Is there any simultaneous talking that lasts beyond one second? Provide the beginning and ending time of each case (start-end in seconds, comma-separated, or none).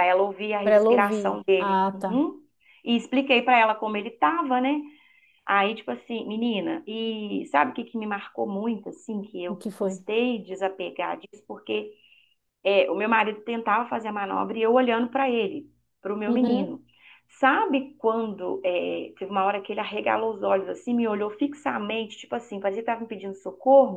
0.6-2.2